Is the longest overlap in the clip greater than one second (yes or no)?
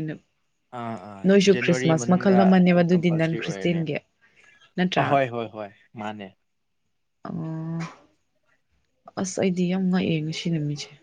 yes